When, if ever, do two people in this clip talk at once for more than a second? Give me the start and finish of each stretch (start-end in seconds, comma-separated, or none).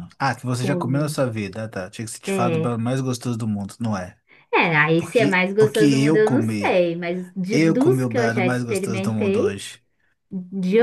5.0-6.8, 7.5-9.6